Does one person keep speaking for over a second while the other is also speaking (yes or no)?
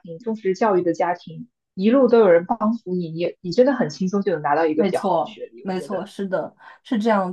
yes